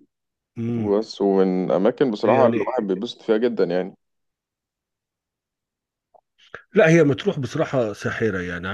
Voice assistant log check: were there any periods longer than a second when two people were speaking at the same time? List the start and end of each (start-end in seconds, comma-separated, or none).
none